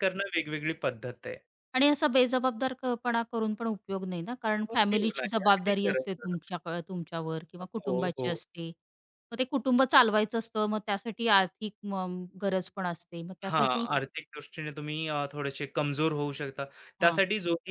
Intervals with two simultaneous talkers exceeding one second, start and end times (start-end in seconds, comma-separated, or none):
4.8-6.4